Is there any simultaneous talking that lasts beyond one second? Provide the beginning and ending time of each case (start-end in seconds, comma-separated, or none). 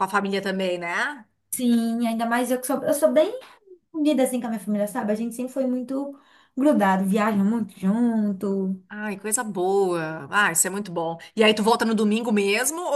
none